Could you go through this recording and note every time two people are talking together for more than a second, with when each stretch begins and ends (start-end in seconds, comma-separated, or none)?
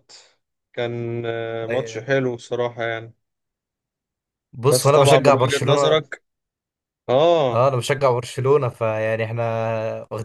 4.7-6.0